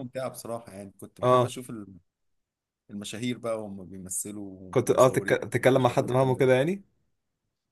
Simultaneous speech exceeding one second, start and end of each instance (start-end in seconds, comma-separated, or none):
4.7-6.5